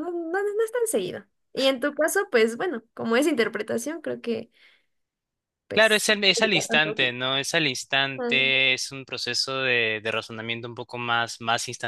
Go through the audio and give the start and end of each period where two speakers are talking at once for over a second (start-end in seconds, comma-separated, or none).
5.7-7.1